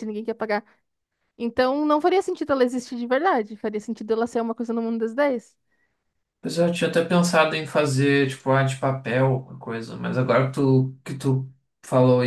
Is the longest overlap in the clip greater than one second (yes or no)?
no